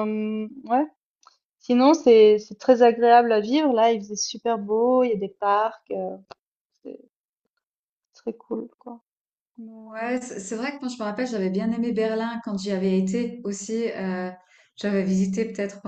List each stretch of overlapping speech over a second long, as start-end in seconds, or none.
none